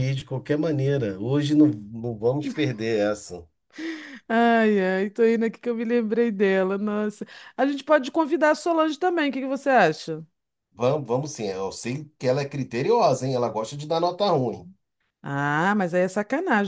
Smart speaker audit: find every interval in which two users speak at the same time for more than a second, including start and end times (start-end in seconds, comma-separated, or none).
none